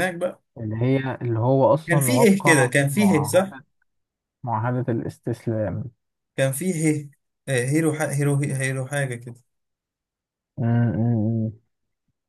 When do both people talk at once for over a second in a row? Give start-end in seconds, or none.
1.9-3.5